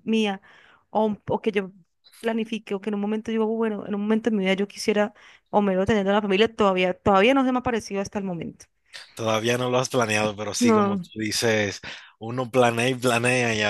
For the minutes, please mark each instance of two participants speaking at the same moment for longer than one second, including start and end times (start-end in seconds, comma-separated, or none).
none